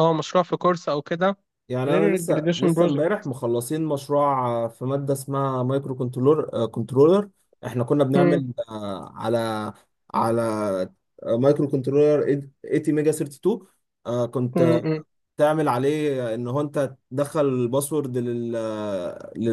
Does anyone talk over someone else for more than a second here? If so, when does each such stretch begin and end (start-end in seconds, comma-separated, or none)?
1.9-3.2